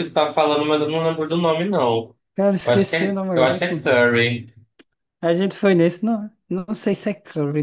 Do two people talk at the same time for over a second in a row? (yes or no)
yes